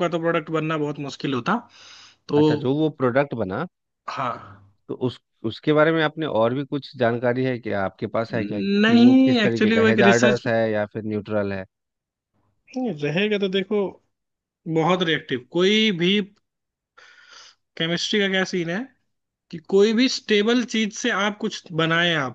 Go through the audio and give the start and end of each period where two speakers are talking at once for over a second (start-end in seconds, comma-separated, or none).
8.8-10.5